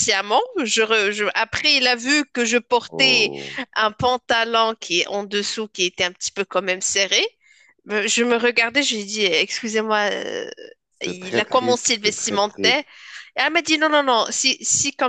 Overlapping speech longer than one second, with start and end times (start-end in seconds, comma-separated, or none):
11.0-12.8